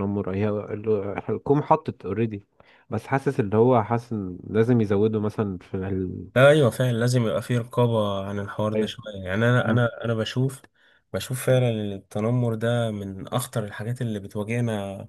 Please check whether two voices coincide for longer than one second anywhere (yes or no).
no